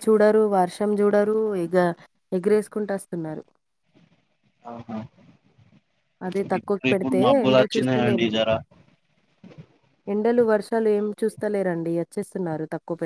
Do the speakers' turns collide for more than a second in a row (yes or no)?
yes